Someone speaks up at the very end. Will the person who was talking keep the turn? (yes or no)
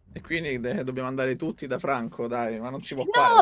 no